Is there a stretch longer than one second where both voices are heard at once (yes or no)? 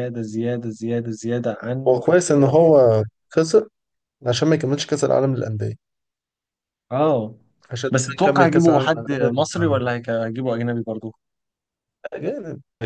yes